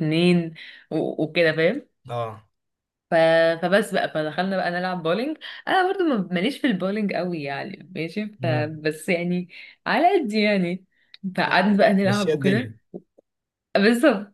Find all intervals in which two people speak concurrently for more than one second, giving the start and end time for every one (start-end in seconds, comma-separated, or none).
11.5-12.8